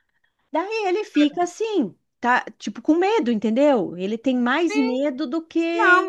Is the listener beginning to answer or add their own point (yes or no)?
yes